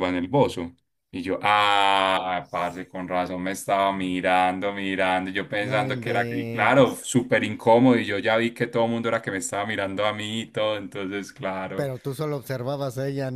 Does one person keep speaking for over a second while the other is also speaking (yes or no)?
yes